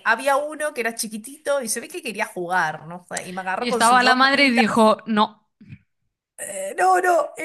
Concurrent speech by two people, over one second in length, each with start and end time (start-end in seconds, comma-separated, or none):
3.6-4.8